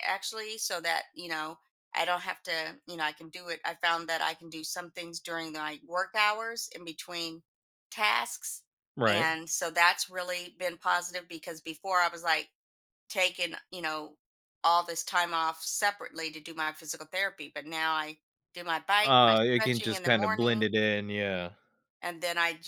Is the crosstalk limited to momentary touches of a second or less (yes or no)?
no